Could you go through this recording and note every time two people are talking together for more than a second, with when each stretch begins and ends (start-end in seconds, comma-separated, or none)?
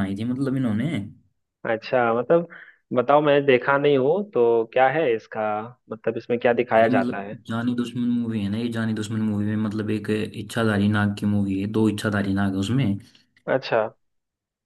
none